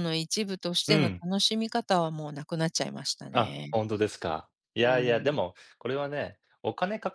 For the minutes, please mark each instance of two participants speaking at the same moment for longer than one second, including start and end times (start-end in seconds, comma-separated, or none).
none